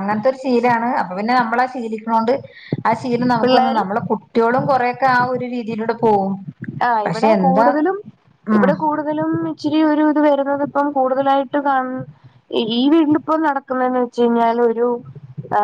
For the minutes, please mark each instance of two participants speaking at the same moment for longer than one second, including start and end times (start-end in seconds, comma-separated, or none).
none